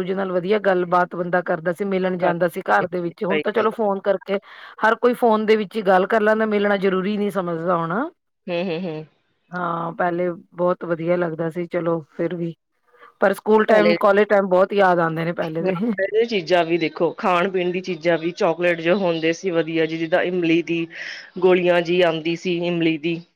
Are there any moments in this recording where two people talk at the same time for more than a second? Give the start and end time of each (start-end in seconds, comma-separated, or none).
2.0-3.9